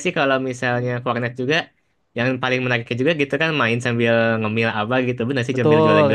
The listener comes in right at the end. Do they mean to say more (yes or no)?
yes